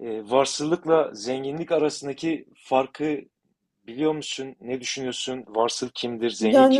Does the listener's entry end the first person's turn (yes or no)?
yes